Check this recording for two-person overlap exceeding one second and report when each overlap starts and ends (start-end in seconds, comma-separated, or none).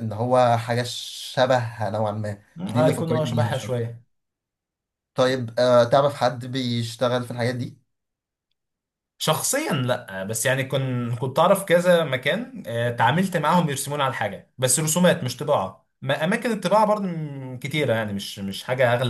2.6-3.9